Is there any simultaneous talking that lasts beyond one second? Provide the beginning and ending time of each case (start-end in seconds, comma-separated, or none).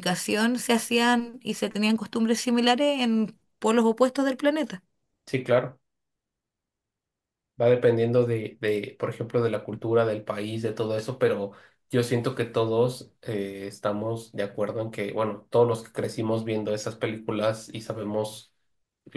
none